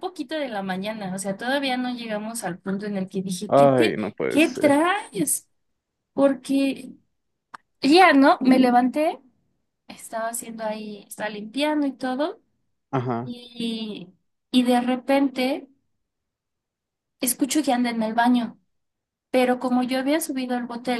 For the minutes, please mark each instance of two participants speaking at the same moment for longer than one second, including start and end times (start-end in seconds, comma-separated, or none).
3.5-4.9